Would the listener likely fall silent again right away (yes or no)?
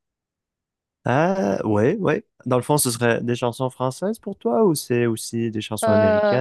no